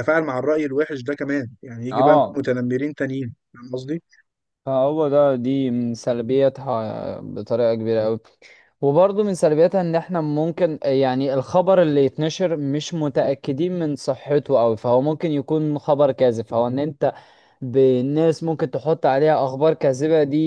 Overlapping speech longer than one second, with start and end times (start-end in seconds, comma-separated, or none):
none